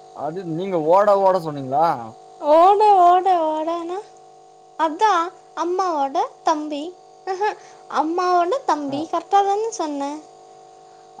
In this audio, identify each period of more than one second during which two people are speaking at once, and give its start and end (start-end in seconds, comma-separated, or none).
none